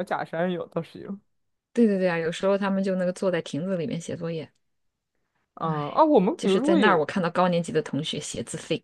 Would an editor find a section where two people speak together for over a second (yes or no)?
yes